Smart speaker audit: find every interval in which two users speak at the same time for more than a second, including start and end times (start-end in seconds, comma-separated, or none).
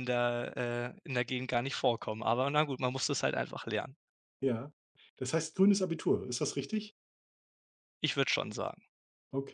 none